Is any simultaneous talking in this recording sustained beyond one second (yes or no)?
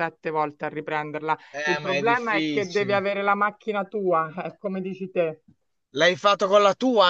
yes